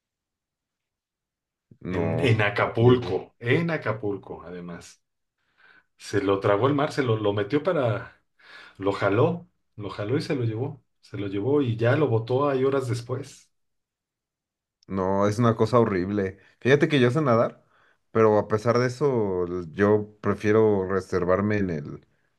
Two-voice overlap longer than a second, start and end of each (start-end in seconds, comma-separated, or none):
1.9-3.2